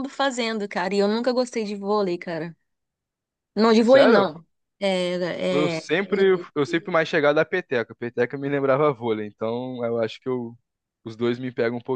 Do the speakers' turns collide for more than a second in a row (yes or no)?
no